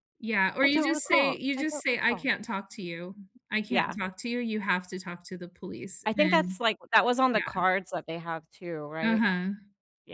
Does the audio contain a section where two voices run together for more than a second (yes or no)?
yes